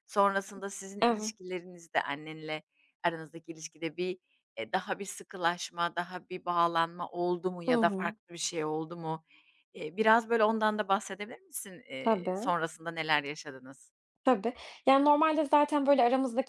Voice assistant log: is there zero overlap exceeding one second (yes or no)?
yes